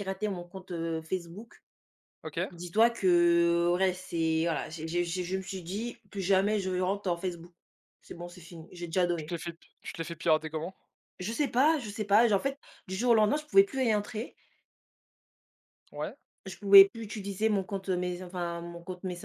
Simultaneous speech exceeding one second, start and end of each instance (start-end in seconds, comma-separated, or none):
none